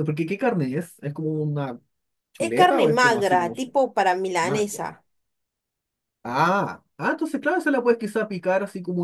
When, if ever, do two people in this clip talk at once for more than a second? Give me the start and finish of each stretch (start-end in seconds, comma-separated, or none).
2.4-3.8